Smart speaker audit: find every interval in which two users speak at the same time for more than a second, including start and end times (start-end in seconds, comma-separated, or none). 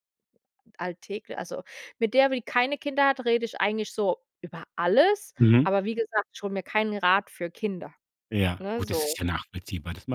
none